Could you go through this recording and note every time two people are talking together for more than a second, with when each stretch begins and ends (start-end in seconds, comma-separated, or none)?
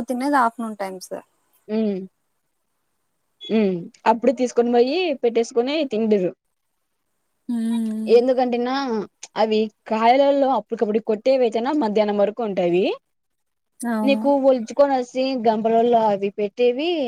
none